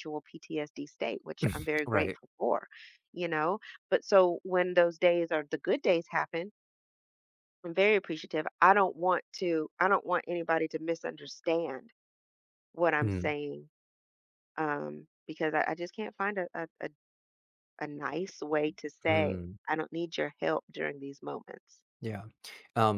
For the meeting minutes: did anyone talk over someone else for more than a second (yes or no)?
no